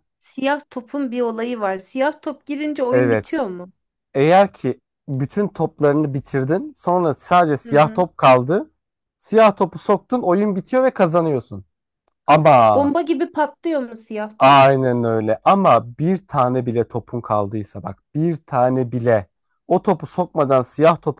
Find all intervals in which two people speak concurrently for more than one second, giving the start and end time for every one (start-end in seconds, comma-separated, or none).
none